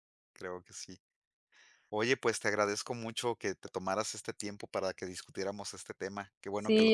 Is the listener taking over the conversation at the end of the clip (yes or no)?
yes